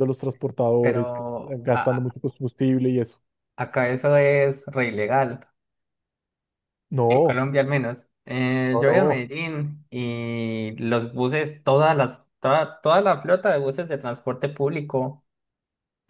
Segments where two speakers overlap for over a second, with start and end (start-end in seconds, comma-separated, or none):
0.8-2.1